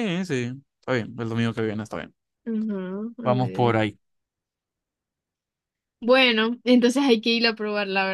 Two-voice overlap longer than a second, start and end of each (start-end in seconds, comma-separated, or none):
none